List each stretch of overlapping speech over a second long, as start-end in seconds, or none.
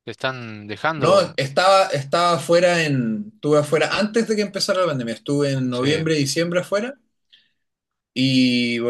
none